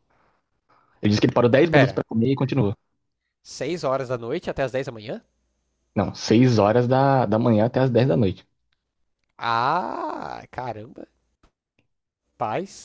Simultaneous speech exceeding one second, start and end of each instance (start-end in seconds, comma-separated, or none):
none